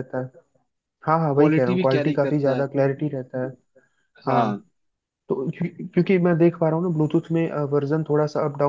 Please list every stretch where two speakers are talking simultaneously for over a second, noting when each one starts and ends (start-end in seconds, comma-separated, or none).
1.4-2.6